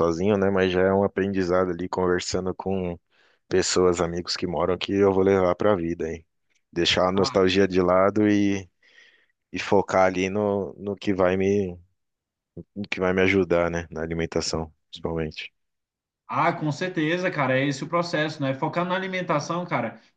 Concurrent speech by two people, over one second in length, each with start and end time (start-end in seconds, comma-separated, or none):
none